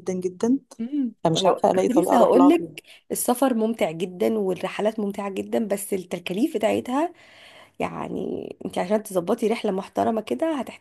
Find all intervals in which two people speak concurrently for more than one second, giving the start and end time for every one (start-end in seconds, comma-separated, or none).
1.2-2.8